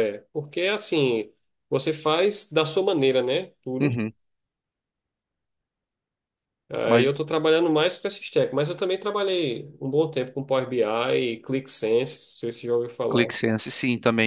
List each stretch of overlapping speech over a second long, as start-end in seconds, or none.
none